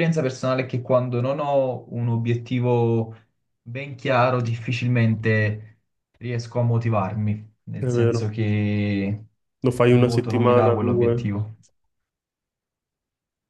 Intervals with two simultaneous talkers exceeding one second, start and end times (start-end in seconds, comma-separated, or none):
9.8-11.4